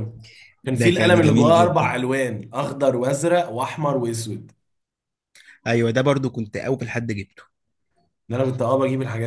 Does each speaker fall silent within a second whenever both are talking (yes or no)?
no